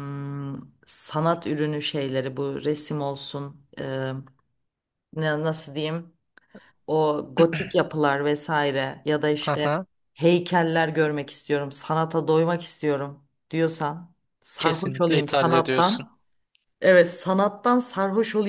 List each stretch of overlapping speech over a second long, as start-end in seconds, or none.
14.6-16.1